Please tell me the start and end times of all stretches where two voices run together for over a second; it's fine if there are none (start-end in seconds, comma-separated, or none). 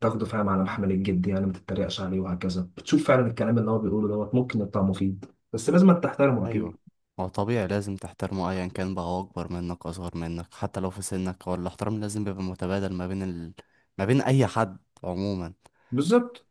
none